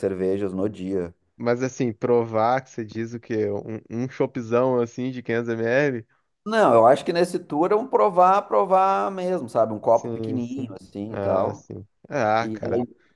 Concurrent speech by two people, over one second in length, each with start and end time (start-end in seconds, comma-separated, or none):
9.9-11.7